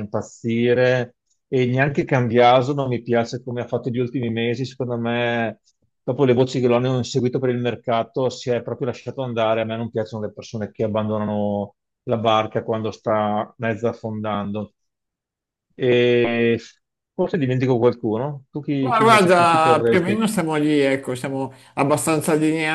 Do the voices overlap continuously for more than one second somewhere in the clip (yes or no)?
yes